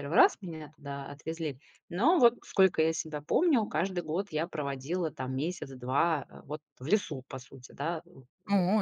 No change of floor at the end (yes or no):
no